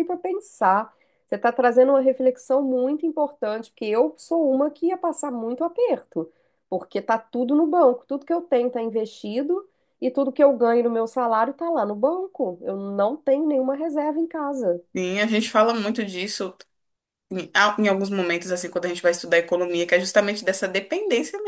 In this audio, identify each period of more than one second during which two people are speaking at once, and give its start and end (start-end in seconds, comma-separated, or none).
none